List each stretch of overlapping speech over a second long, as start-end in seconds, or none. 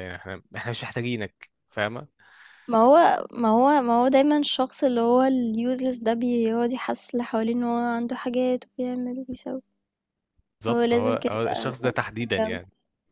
10.7-12.6